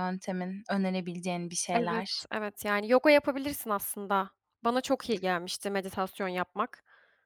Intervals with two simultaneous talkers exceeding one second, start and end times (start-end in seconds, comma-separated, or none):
none